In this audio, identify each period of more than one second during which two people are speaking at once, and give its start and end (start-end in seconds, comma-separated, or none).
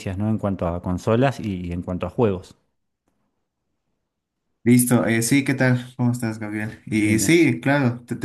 none